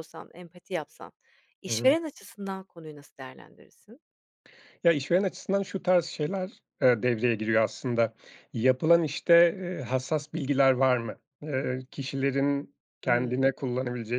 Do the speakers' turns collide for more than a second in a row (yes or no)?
no